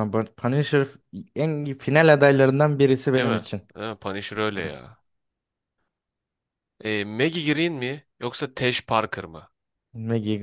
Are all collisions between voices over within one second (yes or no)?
yes